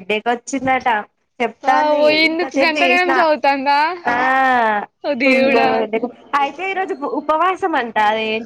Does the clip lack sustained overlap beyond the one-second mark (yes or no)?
no